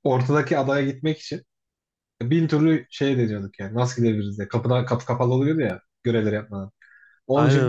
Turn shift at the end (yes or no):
no